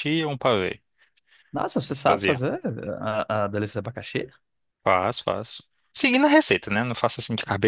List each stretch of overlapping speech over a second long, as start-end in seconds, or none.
none